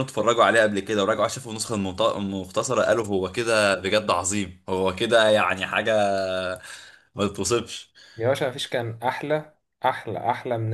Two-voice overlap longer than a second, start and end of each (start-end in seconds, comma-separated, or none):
none